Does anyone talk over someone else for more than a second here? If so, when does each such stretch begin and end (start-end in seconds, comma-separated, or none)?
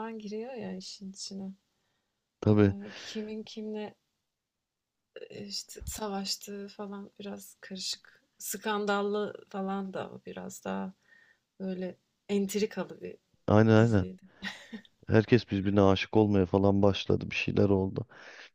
none